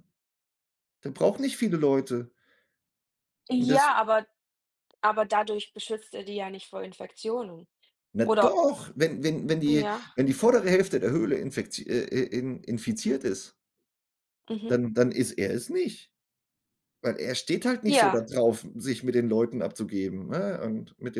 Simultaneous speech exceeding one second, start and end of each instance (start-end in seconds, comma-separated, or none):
none